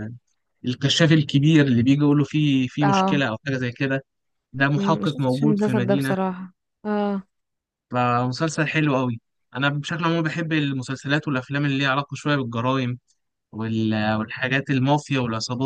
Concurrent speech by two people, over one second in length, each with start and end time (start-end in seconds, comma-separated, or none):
4.8-6.2